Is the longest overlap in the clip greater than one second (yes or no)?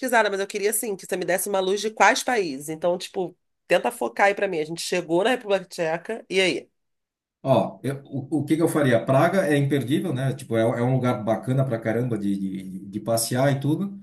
no